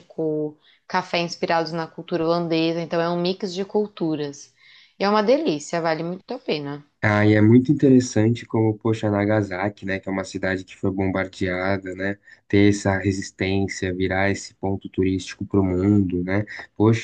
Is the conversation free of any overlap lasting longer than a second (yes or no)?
yes